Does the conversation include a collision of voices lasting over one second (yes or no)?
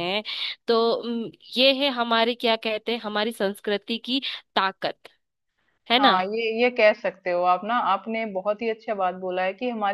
no